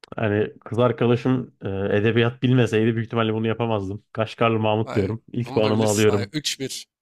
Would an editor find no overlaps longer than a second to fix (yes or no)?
no